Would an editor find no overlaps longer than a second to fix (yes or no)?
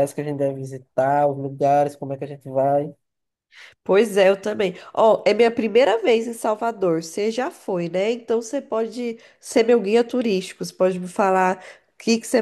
yes